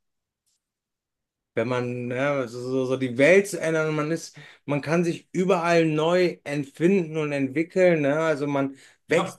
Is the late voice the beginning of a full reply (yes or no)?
no